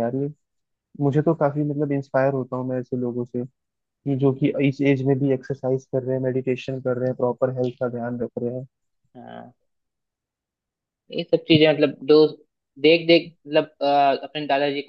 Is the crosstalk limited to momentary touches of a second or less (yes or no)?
yes